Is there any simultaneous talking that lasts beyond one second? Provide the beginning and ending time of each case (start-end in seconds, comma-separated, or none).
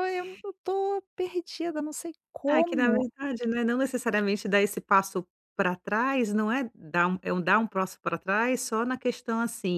none